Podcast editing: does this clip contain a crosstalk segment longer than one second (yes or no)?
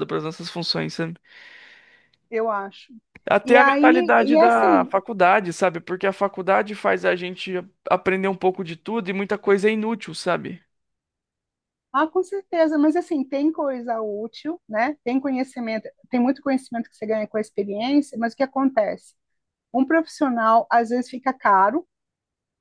yes